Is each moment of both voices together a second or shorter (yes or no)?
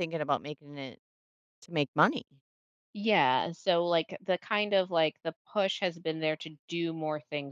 yes